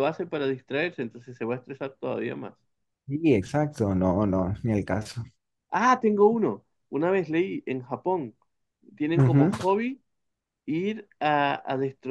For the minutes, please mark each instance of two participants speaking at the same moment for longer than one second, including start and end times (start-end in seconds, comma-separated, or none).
none